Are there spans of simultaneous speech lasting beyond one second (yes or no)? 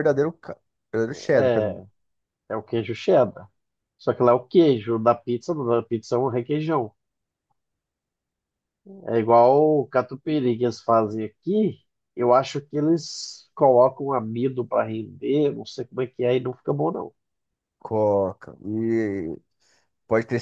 no